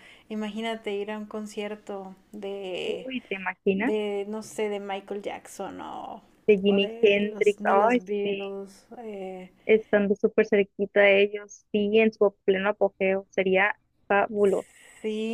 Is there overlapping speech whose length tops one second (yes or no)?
yes